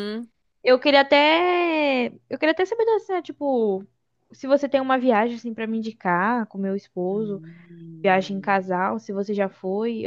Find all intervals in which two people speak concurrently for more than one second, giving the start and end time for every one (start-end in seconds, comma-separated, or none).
none